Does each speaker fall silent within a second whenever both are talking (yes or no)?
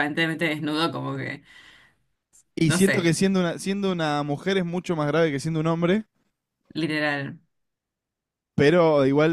yes